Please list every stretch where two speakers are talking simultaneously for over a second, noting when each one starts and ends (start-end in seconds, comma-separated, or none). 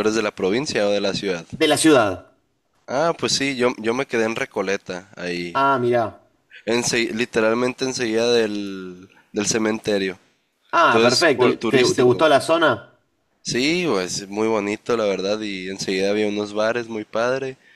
10.9-12.3